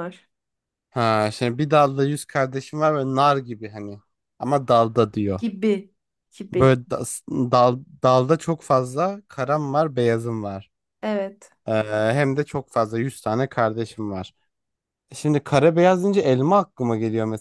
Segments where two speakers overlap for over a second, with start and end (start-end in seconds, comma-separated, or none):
none